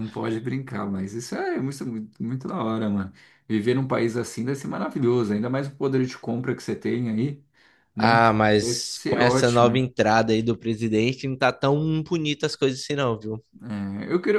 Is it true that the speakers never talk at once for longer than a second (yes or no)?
no